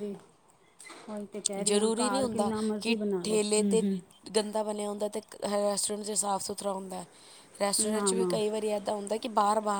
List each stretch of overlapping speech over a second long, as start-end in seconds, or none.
1.6-3.8